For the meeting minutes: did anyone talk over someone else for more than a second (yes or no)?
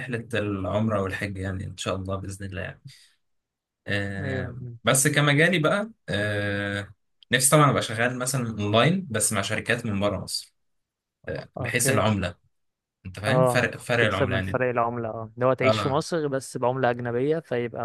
yes